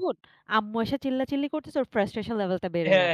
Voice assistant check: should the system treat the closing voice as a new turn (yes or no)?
yes